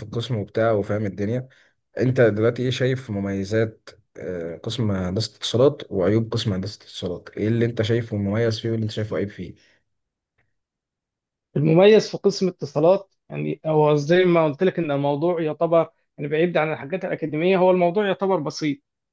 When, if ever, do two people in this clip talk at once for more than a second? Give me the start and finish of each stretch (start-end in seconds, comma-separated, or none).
none